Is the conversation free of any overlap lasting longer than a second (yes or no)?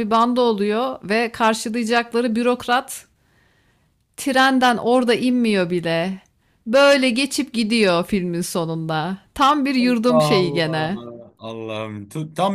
no